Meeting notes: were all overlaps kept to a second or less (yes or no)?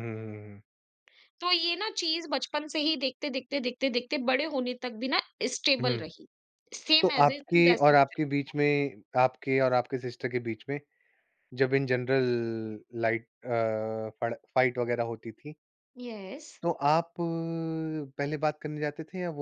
no